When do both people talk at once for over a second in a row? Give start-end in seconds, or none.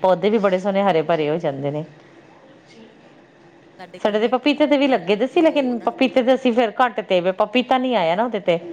4.1-5.9